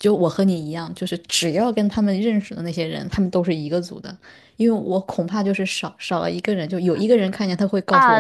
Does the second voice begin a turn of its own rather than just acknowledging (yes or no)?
yes